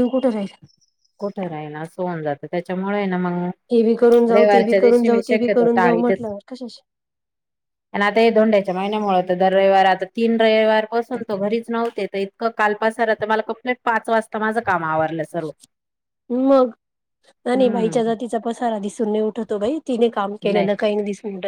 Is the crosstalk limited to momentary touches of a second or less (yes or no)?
no